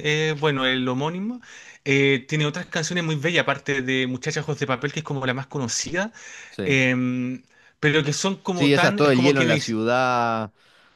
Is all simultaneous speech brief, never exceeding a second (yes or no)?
no